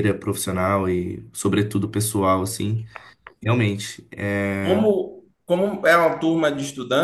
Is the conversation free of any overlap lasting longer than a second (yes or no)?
yes